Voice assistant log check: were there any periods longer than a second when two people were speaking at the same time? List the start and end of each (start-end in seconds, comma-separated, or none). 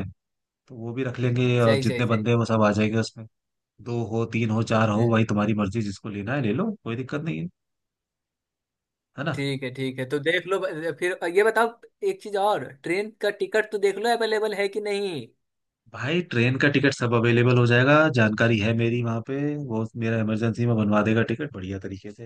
none